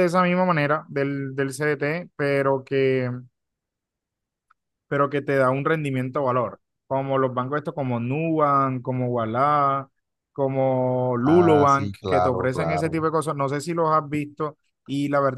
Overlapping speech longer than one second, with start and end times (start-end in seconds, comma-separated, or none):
11.2-13.0